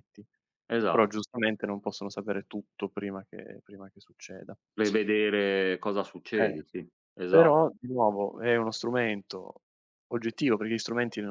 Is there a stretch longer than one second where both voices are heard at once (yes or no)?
no